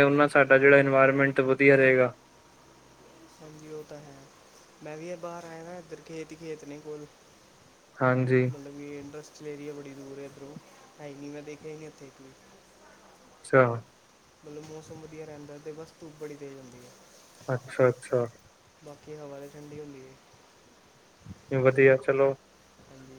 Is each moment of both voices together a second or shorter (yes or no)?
yes